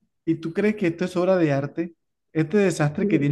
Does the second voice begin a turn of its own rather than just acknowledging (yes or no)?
no